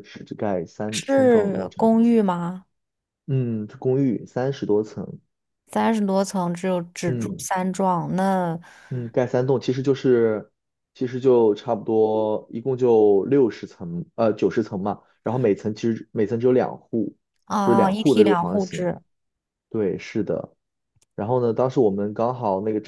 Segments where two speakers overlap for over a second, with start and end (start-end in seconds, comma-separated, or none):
0.9-2.1, 17.6-18.9